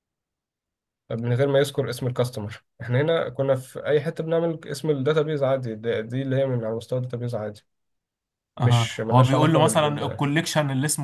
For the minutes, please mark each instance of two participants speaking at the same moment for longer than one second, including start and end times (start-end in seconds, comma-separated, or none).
8.6-10.2